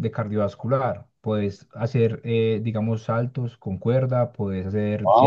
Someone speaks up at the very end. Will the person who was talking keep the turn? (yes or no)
yes